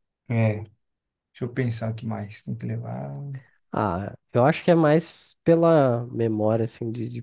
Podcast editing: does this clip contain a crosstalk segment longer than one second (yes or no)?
no